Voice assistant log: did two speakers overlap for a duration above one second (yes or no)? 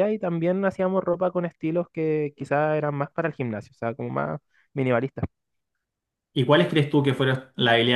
no